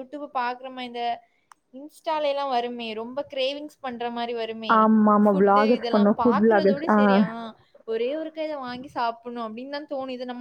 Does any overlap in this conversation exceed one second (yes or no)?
yes